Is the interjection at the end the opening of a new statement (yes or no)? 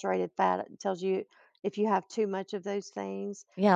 yes